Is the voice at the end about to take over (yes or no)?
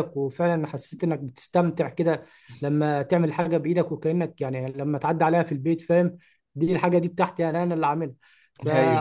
no